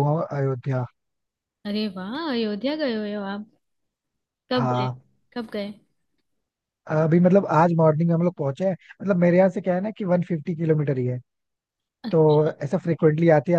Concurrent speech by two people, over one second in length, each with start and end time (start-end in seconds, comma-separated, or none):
none